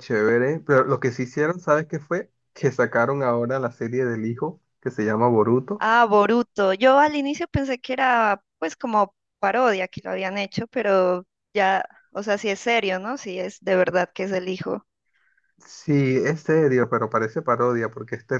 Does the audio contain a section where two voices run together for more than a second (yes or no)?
no